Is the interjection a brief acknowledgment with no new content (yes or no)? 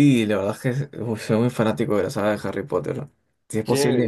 no